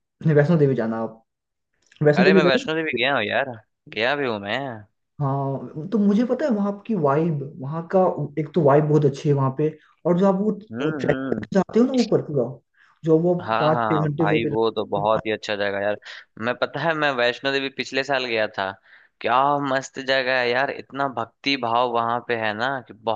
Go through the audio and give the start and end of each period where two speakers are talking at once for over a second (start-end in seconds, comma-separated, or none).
13.4-15.2